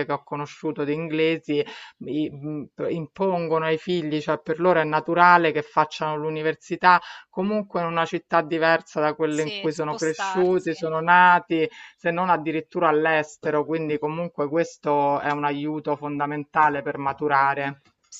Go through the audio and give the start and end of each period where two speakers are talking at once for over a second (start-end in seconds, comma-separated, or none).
9.3-10.7